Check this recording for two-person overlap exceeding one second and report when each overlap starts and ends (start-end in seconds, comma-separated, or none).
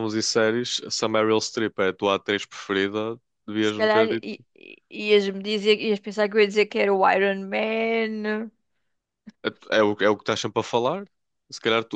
none